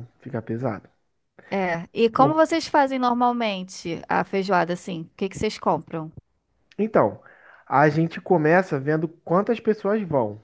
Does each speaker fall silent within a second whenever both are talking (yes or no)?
yes